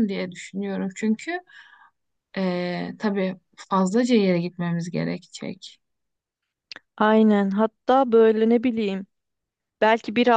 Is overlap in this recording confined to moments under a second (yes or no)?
yes